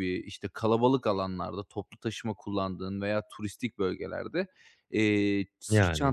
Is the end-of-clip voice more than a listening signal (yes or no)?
no